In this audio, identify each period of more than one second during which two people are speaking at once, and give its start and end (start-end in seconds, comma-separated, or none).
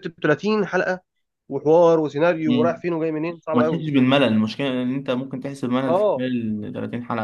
none